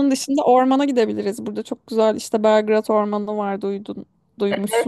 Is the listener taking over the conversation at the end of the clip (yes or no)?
yes